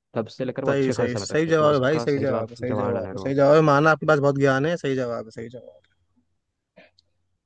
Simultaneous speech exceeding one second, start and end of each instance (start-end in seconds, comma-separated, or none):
0.7-3.3